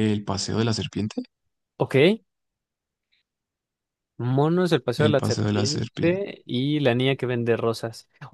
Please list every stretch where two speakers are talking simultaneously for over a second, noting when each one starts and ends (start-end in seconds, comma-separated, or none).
5.0-6.2